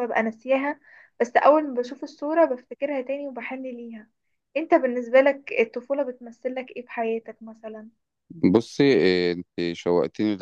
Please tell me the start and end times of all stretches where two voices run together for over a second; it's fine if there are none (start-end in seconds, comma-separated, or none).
none